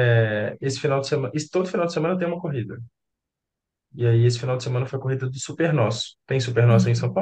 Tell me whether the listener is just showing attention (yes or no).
no